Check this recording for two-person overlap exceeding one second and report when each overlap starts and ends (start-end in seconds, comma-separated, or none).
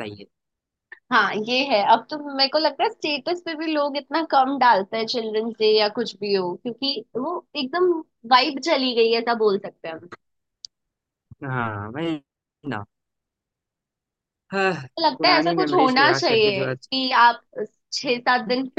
15.2-16.9